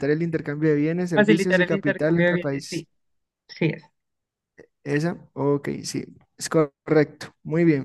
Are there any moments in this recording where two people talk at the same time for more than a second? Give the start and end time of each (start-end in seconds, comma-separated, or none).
1.1-2.9